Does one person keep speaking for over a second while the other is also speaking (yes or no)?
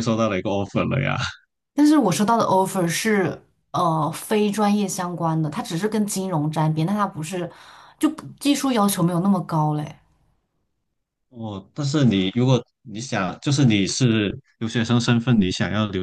no